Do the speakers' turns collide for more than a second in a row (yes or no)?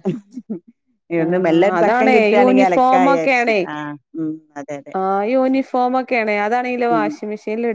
yes